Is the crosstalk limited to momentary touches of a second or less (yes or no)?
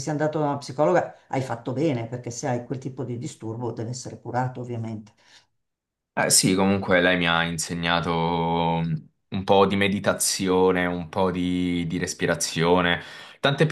yes